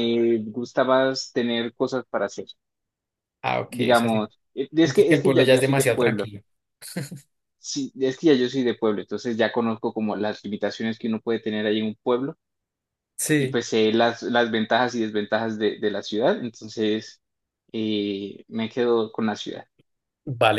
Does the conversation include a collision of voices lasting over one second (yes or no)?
yes